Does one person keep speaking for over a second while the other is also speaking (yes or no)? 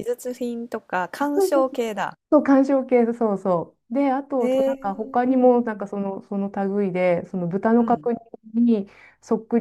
yes